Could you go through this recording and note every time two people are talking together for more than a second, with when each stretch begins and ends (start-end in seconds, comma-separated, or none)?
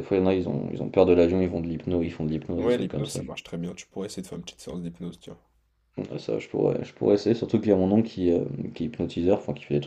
none